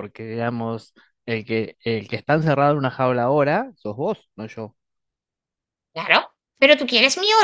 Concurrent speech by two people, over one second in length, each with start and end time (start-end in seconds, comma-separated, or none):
none